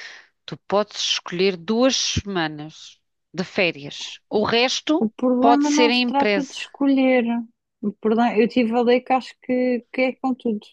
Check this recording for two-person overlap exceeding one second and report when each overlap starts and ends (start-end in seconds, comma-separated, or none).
5.0-6.6